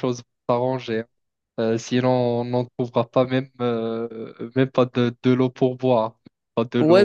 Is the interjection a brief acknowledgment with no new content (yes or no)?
no